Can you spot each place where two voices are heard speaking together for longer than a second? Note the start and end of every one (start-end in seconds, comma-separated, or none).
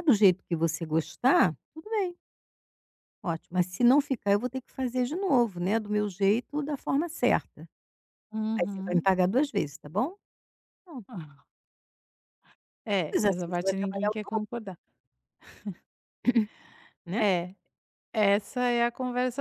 13.0-14.4